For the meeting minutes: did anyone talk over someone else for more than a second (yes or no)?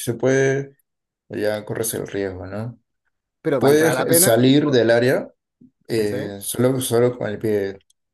yes